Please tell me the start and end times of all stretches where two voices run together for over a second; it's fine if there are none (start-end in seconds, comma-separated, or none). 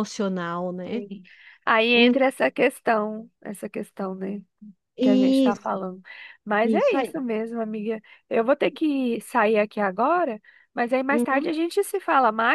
none